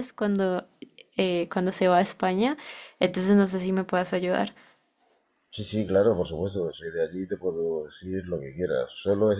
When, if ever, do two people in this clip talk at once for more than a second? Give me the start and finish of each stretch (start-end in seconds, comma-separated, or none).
none